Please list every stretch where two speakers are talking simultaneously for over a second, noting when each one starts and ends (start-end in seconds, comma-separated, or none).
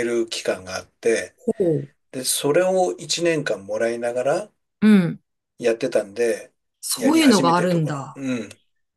7.0-8.2